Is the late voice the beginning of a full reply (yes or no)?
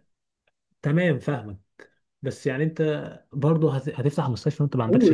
yes